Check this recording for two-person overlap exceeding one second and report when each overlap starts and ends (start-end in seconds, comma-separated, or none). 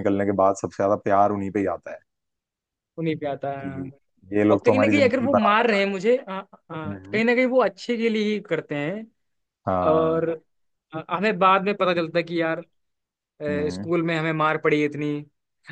4.5-6.1